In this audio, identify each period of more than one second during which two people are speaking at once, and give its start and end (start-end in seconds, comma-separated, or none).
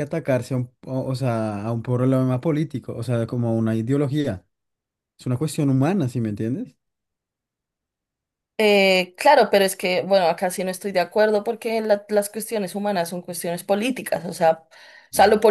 none